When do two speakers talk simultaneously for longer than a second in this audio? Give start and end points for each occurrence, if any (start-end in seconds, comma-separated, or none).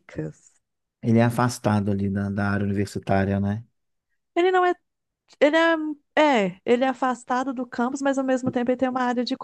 none